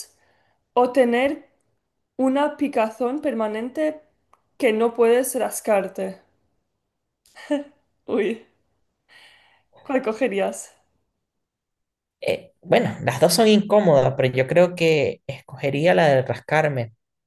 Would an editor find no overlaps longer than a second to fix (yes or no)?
yes